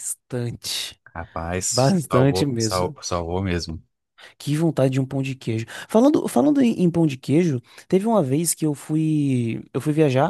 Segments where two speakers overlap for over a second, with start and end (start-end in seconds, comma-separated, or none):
1.7-3.0